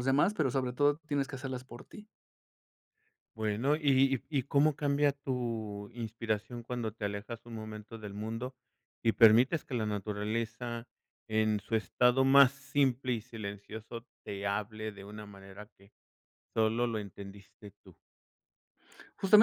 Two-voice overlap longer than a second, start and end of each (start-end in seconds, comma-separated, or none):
none